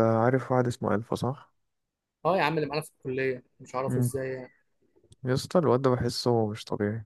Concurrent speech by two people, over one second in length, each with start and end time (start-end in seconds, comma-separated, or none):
none